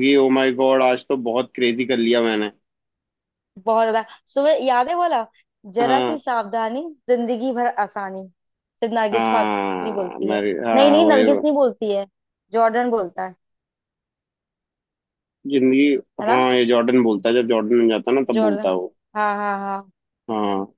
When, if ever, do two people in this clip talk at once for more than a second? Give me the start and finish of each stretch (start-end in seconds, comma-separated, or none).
9.1-11.3